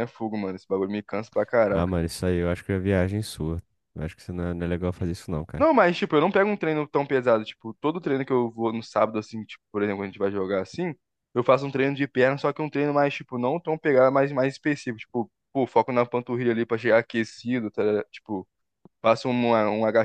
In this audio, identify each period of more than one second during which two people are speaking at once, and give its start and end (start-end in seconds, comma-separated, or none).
none